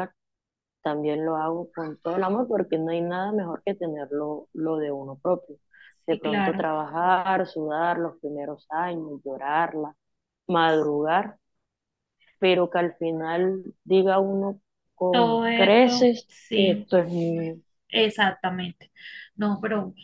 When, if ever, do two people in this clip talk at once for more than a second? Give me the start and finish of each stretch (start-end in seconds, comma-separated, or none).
15.1-16.9